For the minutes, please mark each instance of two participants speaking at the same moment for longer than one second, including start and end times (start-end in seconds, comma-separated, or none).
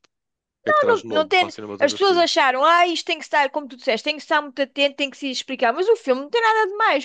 0.7-2.3